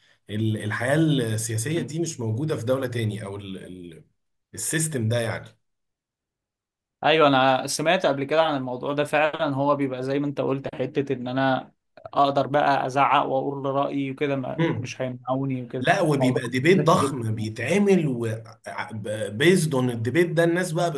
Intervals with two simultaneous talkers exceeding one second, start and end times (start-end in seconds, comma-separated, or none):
15.8-17.5